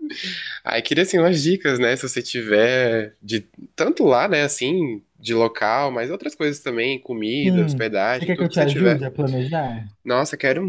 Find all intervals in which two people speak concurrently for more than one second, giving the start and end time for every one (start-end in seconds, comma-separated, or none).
7.4-9.0